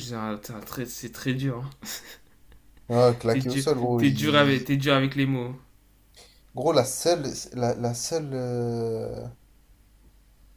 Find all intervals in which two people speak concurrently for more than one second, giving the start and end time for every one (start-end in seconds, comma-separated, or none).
3.3-4.7